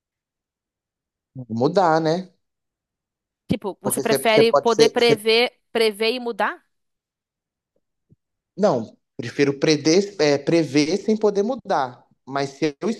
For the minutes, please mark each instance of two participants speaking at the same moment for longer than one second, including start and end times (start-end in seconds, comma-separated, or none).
3.8-5.2